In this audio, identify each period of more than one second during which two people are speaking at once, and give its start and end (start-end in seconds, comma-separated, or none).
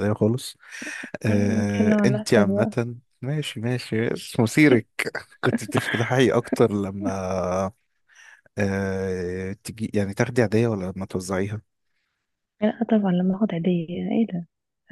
1.3-2.7